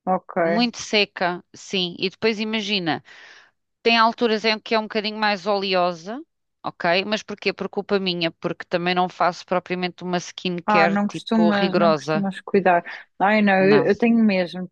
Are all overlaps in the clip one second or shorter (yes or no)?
no